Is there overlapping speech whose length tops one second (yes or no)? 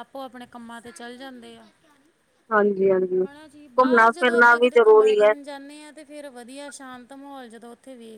yes